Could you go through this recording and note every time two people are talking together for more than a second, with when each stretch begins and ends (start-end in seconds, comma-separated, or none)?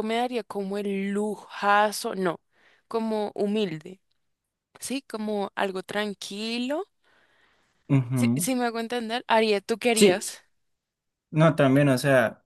none